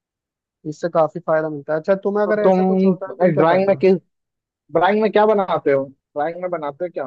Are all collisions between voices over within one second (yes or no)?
no